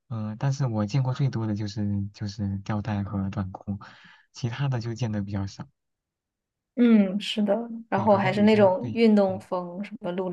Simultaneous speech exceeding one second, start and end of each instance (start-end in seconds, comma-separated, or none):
7.9-9.4